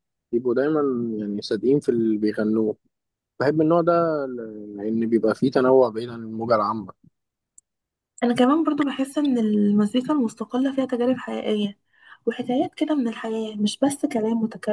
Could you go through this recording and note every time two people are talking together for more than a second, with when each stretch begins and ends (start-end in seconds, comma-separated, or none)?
none